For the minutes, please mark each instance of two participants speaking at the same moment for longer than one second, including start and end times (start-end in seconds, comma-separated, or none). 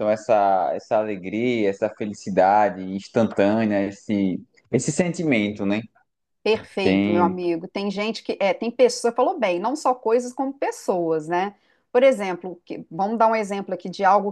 none